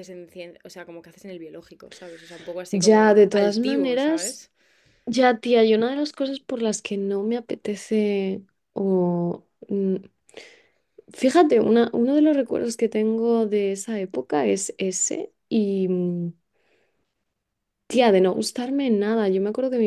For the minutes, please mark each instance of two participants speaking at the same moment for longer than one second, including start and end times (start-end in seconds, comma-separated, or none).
2.7-4.4